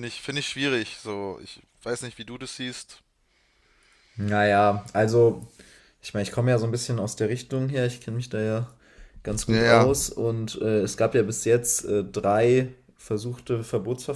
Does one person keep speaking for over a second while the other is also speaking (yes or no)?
no